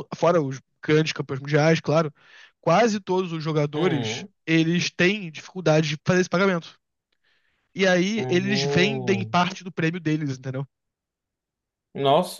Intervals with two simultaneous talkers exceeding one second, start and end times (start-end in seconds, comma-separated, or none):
8.2-9.4